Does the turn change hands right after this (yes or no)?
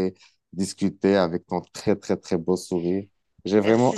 yes